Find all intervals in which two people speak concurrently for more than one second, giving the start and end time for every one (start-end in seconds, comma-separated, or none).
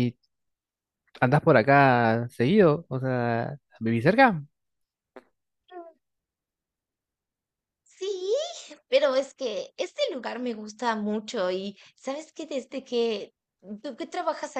none